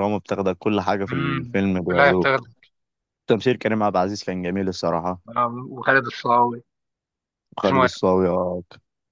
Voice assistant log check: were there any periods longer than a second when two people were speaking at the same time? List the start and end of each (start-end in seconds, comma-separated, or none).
1.1-2.4